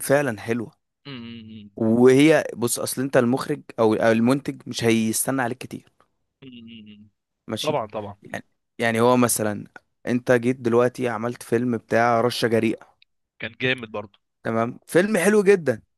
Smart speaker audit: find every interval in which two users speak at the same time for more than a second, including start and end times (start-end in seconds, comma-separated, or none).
none